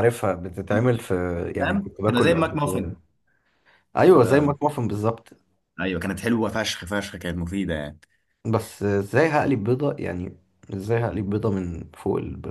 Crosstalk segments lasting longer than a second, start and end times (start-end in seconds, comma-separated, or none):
1.6-3.0